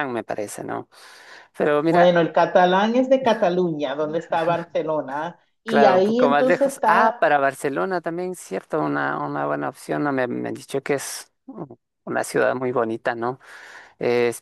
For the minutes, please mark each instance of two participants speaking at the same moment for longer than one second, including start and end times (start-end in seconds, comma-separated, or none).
5.7-7.3